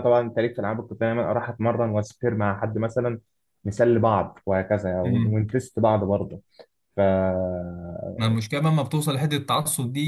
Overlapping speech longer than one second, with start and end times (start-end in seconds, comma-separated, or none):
none